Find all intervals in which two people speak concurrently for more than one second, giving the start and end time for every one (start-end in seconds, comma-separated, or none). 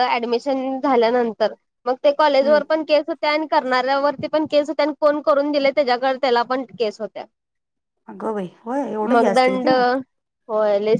none